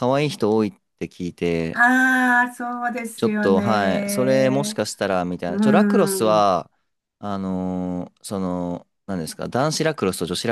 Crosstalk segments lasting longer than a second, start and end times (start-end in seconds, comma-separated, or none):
3.2-4.8